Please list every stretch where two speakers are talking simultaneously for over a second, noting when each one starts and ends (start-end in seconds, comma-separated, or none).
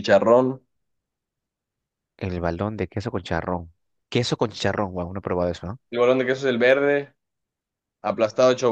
none